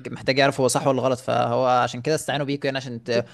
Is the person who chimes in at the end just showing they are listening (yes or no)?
yes